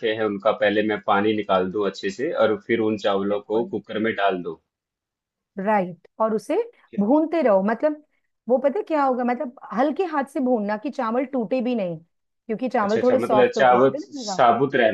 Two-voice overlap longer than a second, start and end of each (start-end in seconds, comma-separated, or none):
12.8-14.4